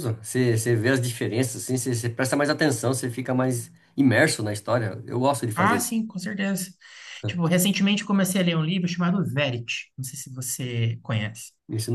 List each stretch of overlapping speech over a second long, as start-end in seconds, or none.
none